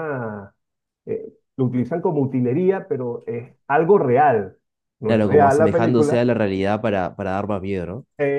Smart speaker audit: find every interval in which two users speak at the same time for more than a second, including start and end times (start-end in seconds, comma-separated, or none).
5.0-6.2